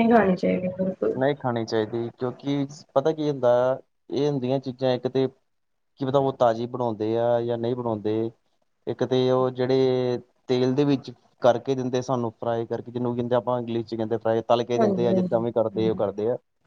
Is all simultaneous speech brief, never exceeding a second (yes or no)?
no